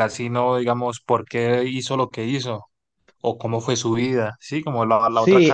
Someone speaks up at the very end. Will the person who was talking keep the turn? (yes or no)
no